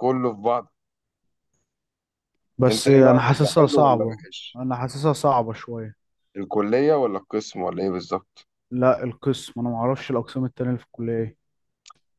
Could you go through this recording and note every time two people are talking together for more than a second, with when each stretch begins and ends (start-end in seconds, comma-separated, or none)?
2.7-4.6